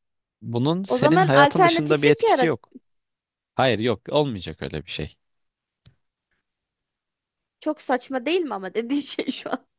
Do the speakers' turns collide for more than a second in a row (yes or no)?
yes